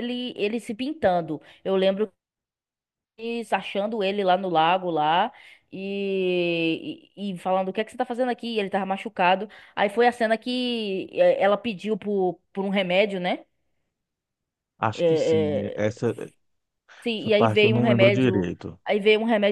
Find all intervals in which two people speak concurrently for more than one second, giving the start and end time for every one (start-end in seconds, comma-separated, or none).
17.2-18.8